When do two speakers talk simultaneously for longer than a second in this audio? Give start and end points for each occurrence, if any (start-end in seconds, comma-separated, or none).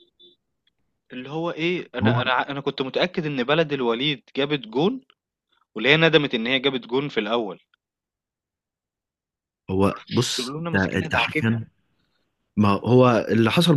9.8-11.6